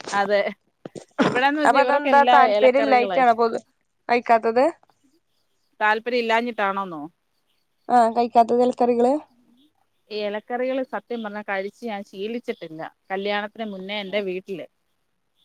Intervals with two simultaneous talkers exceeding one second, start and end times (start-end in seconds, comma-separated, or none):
1.7-3.5